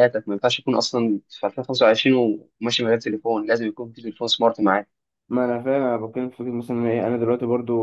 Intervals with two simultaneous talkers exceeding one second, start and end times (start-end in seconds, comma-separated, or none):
none